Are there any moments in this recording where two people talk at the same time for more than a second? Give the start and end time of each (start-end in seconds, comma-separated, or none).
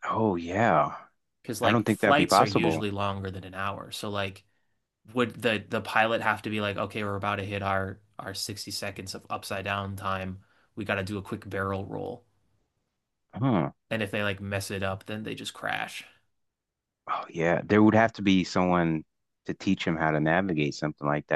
1.6-2.9